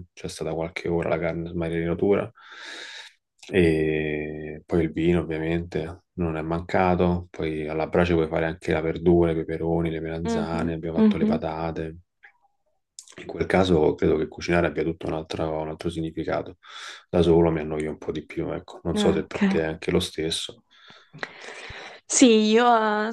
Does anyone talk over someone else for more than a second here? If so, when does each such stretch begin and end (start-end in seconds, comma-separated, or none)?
10.2-11.4